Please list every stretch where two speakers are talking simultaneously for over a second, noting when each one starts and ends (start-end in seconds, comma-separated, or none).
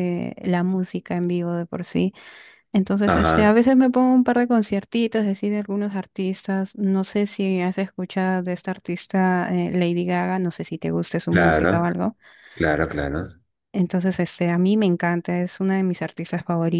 none